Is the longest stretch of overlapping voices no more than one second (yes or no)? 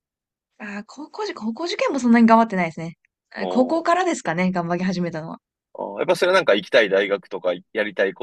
yes